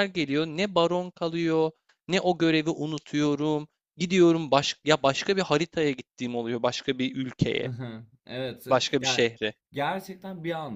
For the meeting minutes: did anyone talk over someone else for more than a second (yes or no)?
no